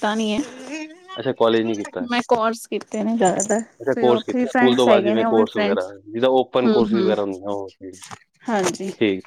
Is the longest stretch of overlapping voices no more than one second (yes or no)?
no